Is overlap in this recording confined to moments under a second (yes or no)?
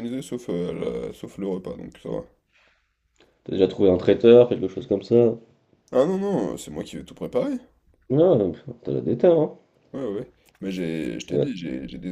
yes